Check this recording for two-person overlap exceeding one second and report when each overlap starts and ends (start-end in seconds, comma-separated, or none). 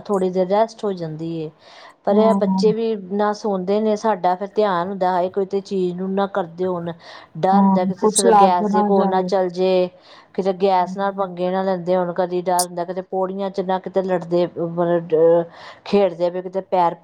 7.5-9.2